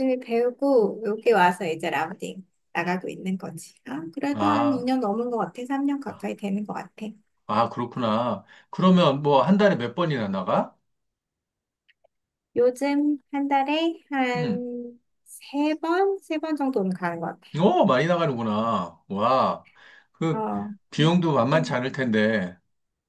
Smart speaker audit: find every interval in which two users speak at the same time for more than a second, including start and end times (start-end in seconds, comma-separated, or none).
none